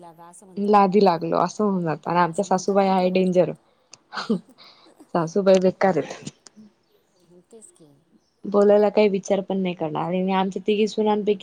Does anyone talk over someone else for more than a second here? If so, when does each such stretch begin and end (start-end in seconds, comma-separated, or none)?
2.3-3.5